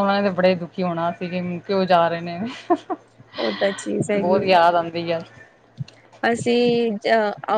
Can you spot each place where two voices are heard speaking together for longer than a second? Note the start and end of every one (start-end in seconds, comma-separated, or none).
none